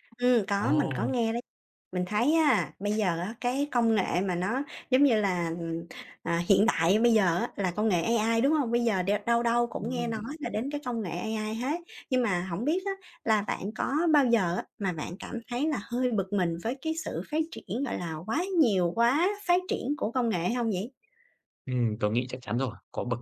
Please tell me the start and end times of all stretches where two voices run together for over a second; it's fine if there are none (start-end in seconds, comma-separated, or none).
none